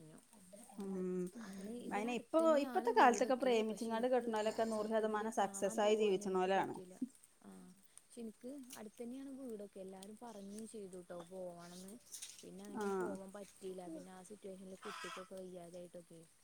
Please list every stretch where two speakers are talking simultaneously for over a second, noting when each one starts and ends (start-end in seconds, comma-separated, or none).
1.9-4.2